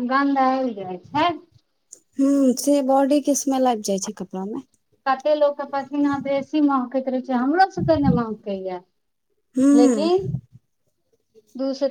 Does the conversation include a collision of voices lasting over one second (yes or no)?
no